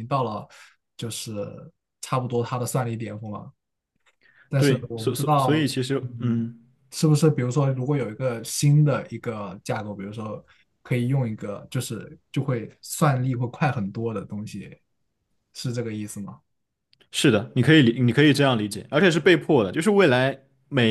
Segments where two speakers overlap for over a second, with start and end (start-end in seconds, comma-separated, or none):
4.6-6.4